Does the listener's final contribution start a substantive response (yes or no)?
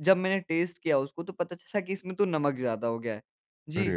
no